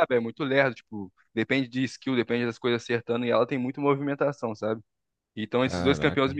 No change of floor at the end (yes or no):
yes